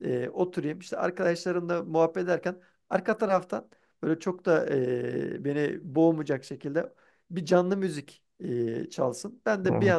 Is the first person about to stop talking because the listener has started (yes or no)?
no